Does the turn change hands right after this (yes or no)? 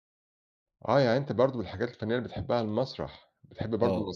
no